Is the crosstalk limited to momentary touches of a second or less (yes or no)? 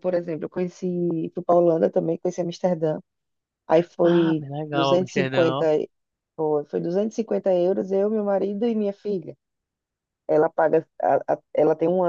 no